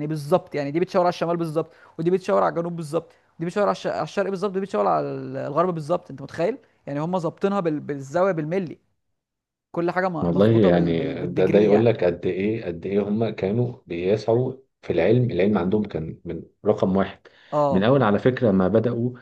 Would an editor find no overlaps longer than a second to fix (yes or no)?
no